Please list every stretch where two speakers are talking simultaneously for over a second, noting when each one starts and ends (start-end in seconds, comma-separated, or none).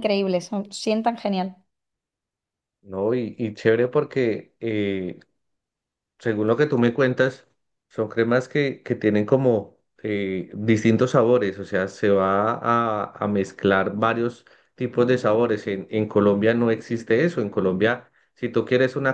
none